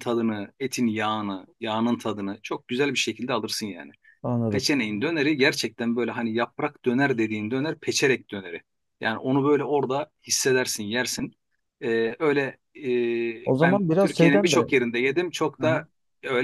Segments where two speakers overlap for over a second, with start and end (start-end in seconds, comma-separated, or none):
13.4-14.7